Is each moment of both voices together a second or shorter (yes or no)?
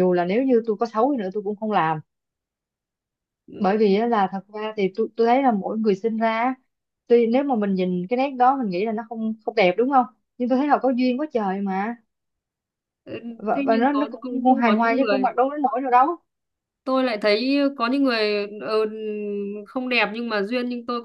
no